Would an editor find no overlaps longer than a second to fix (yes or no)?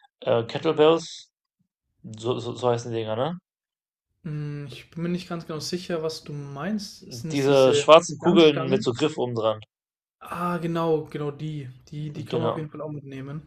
no